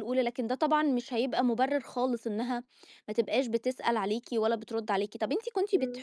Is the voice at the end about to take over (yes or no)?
no